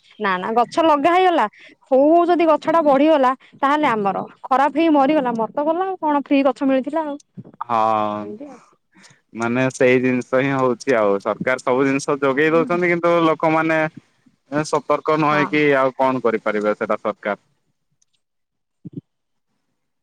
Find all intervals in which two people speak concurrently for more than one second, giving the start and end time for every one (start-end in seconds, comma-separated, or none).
none